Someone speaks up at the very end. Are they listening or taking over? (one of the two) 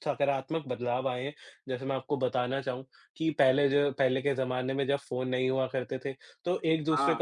listening